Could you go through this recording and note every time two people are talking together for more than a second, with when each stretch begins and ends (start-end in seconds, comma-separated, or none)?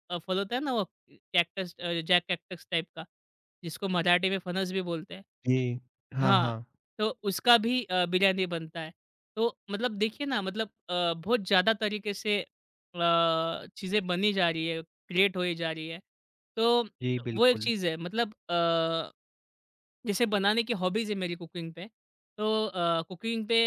none